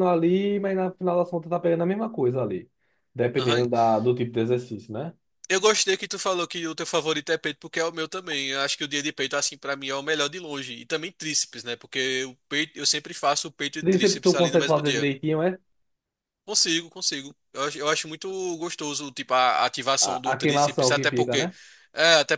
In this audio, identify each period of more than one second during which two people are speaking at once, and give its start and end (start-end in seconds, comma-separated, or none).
13.8-15.1, 20.0-21.5